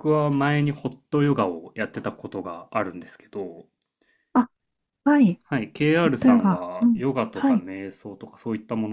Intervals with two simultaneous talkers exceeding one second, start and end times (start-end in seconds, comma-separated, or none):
6.0-7.7